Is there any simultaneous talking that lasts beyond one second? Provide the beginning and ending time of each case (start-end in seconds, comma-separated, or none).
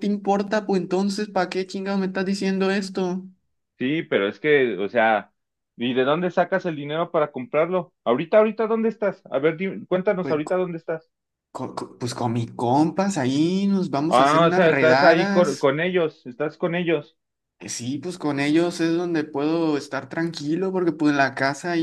14.1-15.7